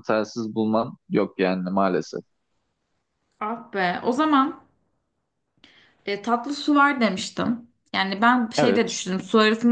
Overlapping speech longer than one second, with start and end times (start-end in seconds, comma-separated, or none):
none